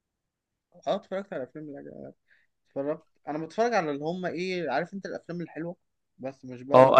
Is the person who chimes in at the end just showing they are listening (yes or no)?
no